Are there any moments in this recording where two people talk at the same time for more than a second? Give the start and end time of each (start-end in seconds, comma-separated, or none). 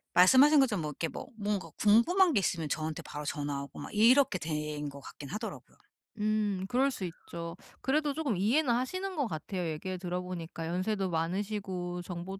none